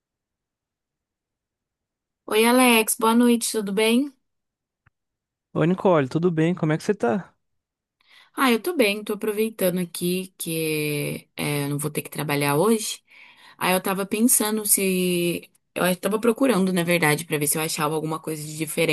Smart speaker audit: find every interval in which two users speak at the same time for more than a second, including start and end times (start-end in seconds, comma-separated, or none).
none